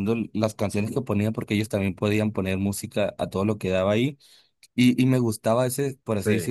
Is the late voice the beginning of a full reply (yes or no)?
no